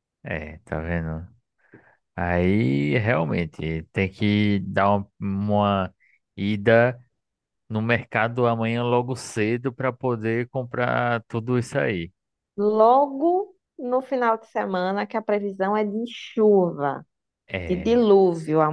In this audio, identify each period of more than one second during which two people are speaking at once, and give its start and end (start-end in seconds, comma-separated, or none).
none